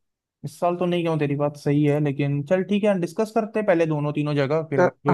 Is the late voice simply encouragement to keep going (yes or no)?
no